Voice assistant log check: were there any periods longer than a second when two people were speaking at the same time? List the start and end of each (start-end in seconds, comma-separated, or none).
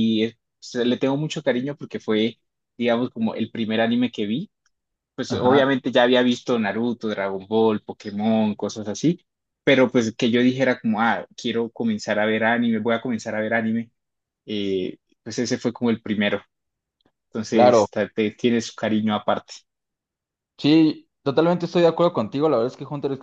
none